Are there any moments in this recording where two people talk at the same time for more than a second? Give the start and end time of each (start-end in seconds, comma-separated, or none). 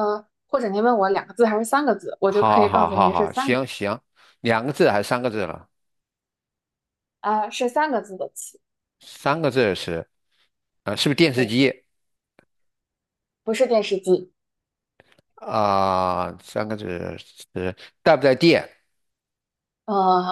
2.3-3.6